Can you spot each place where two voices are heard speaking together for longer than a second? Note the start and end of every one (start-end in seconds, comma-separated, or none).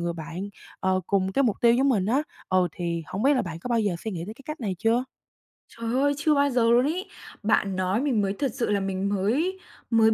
none